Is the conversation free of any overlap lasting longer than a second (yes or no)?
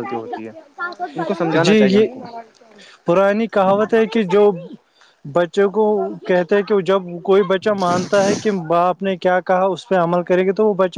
yes